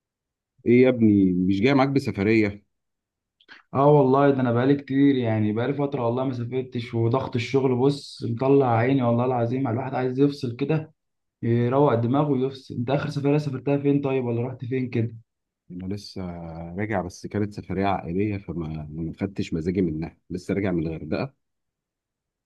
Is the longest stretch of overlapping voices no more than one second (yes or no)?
yes